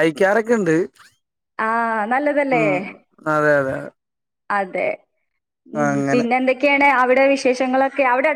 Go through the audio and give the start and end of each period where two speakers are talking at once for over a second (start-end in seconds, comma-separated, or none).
none